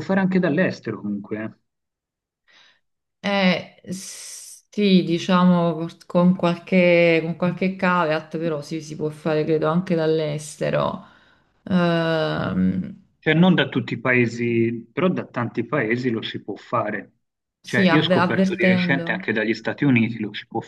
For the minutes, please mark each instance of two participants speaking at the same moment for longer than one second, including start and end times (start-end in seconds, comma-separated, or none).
17.6-19.3